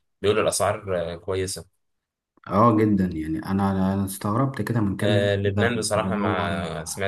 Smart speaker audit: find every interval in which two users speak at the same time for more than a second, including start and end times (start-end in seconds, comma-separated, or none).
5.0-6.5